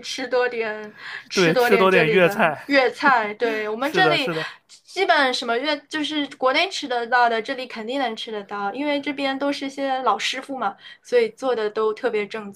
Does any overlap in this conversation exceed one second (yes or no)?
yes